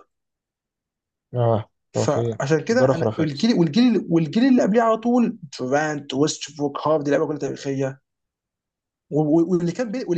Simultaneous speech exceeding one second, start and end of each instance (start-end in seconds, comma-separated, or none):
1.9-3.5